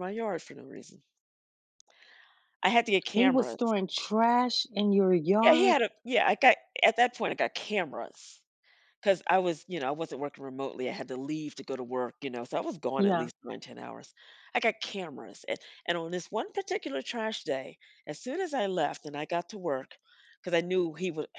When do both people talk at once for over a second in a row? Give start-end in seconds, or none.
none